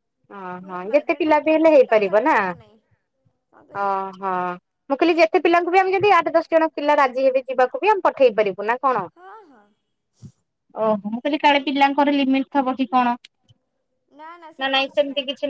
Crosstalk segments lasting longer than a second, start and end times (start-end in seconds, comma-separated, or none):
0.6-2.3